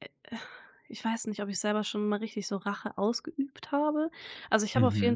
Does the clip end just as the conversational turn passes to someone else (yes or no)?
no